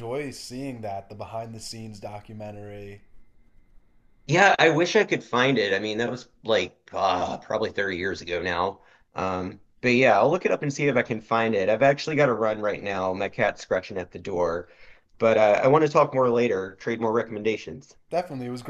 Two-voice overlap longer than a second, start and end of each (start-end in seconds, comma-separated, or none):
none